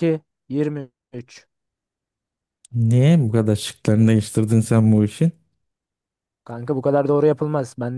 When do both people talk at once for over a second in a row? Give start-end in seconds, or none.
none